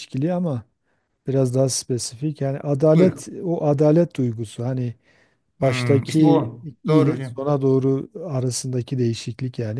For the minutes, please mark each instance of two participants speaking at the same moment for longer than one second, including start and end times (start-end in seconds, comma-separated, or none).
5.6-7.3